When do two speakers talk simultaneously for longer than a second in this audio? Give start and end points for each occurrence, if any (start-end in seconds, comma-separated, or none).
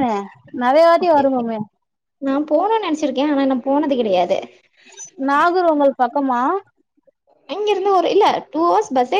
none